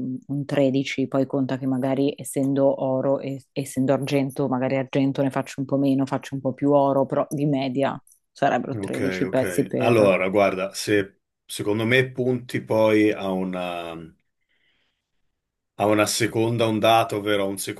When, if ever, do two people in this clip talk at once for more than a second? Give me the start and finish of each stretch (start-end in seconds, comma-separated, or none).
8.7-10.2